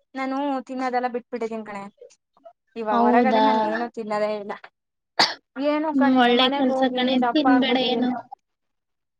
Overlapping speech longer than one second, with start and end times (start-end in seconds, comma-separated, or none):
5.7-8.1